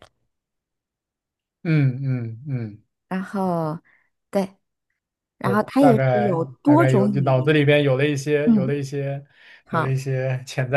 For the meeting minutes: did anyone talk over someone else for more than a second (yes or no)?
yes